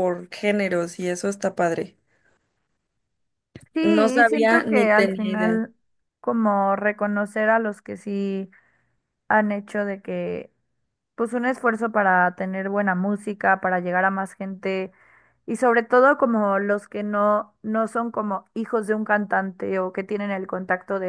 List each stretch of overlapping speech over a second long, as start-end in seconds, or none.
4.2-5.6